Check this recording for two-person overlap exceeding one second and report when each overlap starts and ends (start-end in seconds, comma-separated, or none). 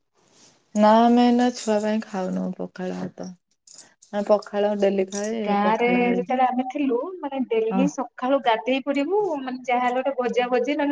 none